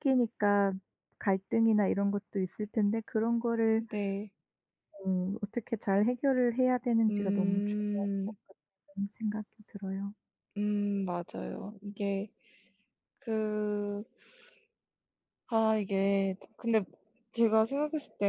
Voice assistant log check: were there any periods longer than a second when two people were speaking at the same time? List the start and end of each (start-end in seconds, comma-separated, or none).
7.1-8.3